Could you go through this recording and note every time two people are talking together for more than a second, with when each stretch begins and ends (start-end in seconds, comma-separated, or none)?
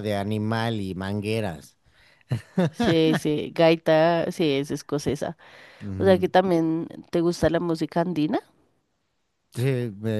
none